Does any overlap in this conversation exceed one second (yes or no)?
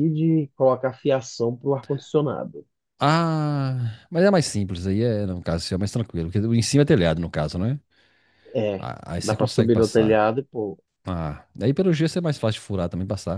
yes